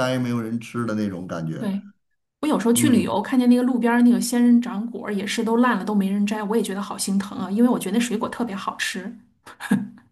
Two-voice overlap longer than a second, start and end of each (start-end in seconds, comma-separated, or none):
none